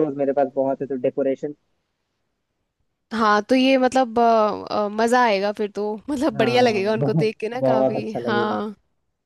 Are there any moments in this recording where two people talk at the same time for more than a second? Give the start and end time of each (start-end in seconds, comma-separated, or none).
6.3-8.6